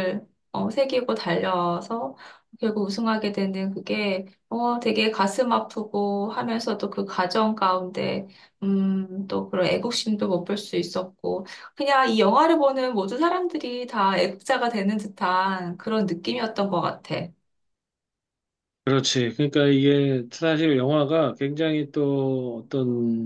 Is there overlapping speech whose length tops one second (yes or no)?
no